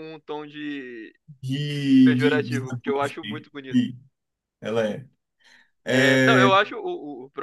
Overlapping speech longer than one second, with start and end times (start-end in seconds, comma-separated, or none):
2.0-3.8